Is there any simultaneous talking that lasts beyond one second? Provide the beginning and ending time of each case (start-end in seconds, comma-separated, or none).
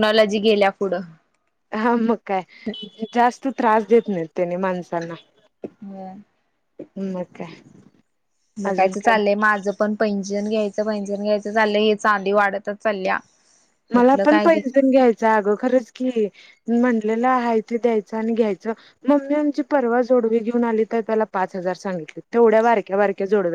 none